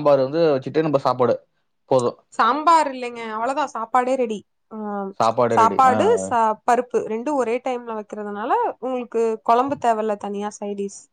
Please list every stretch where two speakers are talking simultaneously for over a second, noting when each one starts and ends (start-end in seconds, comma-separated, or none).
none